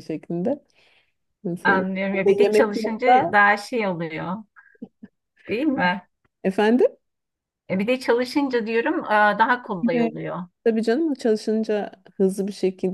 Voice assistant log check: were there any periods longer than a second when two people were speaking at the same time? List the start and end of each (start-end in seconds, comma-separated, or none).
1.6-3.3